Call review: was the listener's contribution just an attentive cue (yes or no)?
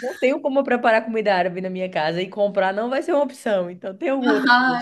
no